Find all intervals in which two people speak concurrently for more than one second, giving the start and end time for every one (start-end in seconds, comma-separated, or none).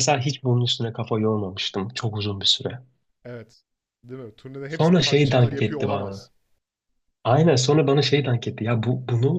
4.7-6.3